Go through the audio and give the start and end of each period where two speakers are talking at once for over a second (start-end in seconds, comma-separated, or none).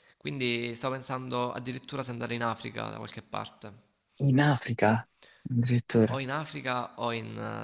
none